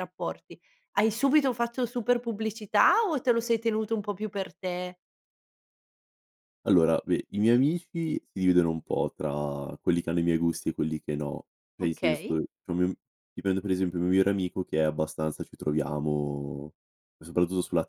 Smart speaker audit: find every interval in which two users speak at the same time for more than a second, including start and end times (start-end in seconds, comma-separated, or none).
none